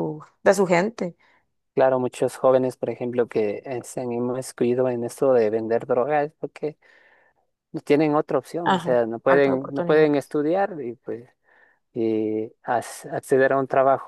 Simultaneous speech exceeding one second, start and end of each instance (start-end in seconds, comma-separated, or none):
8.7-10.1